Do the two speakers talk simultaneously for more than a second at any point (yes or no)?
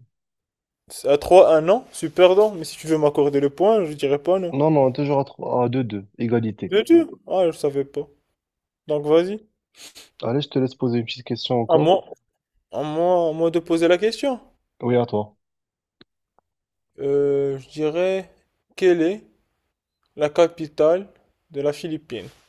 no